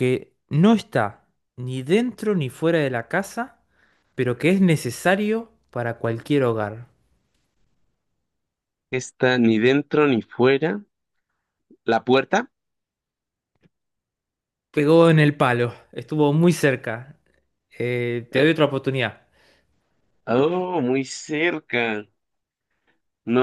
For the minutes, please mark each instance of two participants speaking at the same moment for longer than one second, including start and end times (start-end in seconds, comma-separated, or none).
none